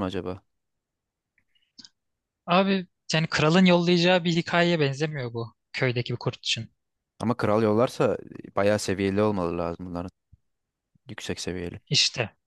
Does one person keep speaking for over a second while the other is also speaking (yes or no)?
no